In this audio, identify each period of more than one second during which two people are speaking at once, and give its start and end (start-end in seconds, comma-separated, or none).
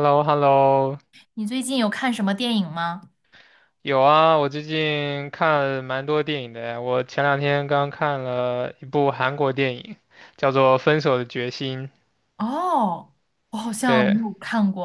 none